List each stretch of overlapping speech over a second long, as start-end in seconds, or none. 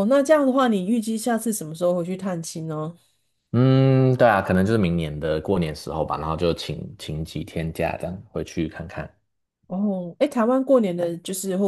none